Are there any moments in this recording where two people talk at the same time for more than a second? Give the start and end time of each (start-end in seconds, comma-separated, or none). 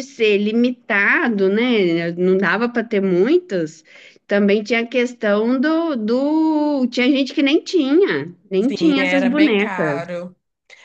8.6-10.0